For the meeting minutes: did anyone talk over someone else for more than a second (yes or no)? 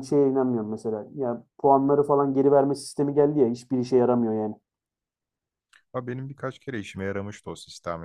no